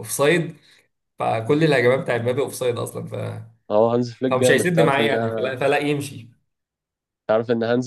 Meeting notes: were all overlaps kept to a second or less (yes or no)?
no